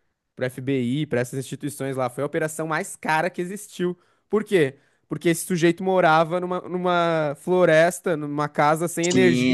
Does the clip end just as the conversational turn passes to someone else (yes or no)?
yes